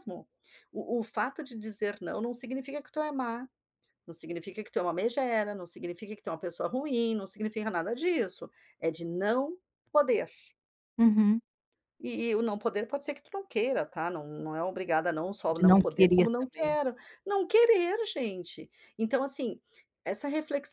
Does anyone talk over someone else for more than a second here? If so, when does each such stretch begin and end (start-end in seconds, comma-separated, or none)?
15.5-16.7